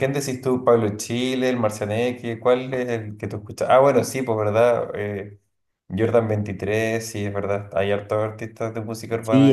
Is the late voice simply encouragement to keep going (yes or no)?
no